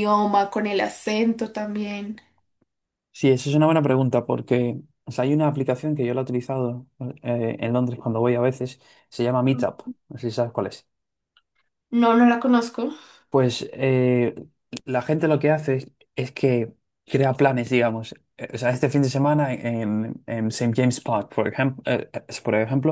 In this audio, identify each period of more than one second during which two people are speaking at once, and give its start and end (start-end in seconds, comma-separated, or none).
none